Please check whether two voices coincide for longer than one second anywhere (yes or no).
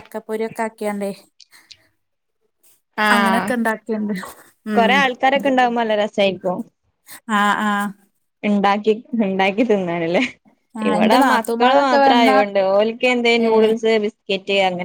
yes